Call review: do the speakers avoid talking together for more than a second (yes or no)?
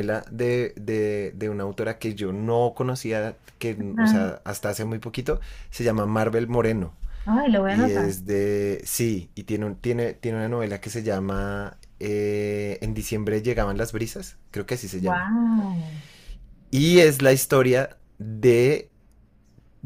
yes